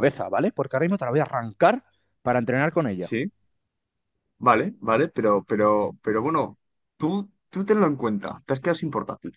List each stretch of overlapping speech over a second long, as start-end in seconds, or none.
none